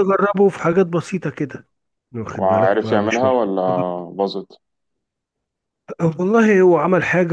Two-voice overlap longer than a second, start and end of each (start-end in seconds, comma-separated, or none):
2.4-3.6